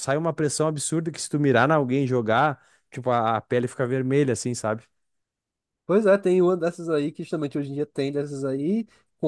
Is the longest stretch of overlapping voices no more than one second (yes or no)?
yes